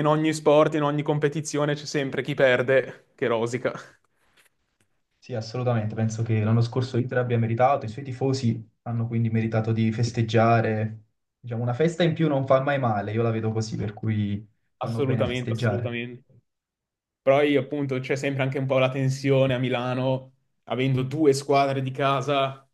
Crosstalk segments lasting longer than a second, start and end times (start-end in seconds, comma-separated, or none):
14.8-16.0